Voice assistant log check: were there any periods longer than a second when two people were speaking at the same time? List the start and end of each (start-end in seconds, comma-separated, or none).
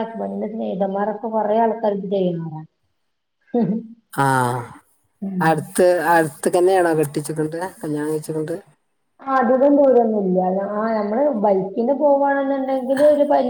none